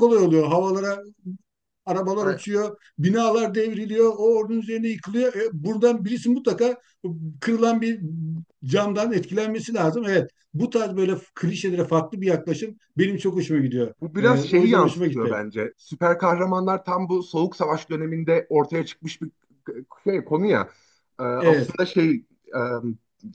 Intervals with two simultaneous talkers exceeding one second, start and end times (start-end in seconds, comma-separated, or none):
14.0-15.4